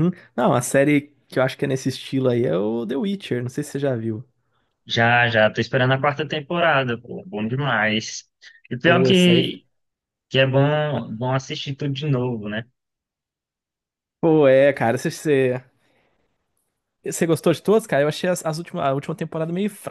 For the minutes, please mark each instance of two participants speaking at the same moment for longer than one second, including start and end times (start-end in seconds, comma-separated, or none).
none